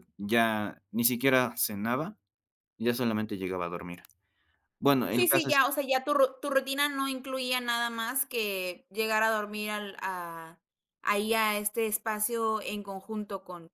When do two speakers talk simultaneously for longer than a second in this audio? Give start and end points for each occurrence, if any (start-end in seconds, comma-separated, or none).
none